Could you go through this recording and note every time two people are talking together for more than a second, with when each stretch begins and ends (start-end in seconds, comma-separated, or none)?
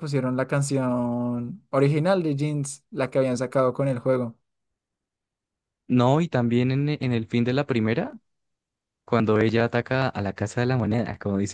none